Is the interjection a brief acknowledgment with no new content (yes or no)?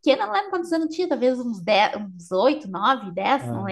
yes